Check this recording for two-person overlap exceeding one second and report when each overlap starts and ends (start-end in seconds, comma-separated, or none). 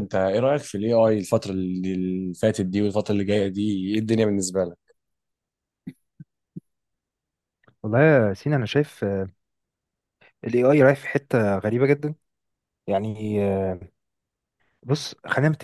none